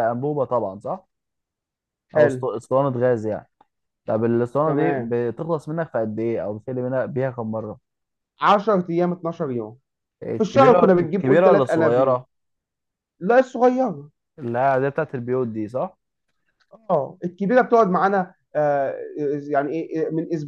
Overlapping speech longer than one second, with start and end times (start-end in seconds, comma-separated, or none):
10.4-12.2